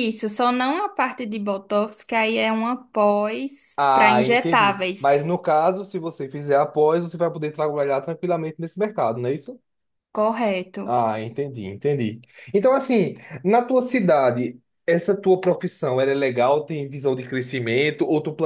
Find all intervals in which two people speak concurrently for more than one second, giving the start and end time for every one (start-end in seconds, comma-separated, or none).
3.8-5.3